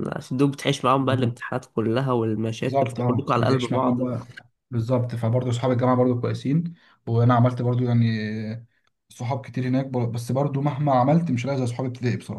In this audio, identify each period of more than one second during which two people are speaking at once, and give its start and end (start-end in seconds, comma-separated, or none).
2.6-4.0